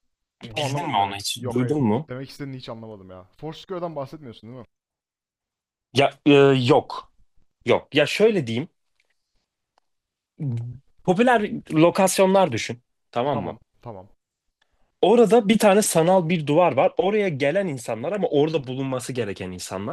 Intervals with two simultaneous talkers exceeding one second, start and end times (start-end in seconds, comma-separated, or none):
0.5-2.1